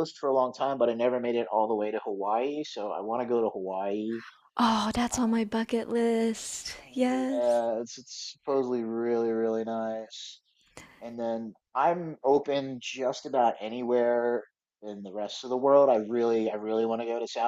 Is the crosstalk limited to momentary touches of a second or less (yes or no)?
yes